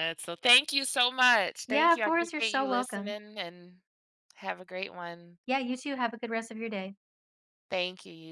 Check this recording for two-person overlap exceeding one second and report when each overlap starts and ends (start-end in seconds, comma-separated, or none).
1.7-3.1